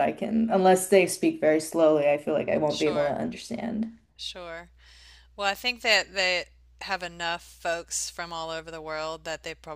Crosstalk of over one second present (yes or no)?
no